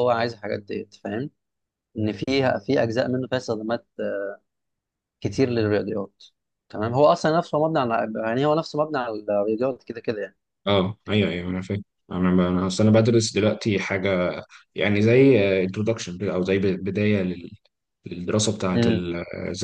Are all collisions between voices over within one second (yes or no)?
yes